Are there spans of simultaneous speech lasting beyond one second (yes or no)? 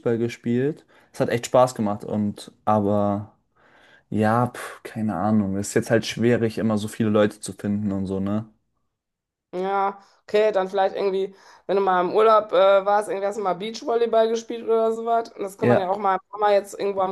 no